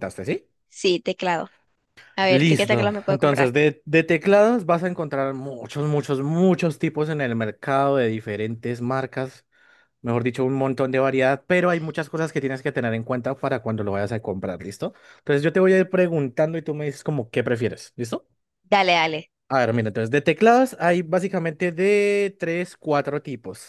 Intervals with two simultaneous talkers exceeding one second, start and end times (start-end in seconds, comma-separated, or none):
2.3-3.5